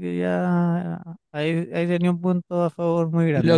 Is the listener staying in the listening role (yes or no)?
no